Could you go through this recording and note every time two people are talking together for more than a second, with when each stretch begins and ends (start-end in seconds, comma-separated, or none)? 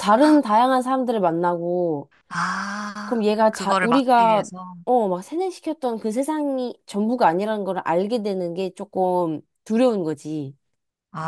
3.0-4.5